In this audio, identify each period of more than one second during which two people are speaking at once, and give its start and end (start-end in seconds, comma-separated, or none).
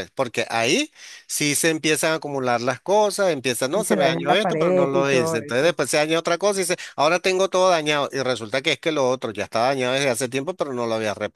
3.7-5.7